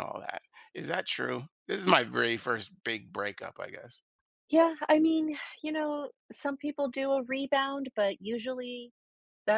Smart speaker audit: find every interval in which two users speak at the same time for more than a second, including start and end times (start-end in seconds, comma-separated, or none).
none